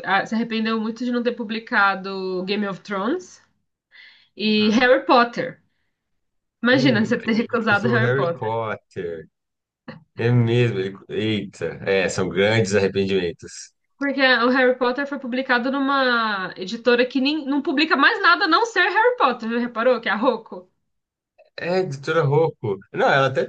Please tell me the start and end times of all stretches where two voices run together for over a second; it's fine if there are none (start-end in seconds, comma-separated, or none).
6.7-8.5